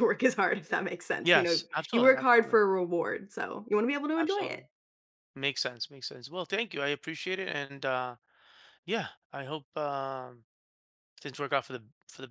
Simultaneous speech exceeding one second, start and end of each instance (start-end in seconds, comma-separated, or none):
1.2-2.6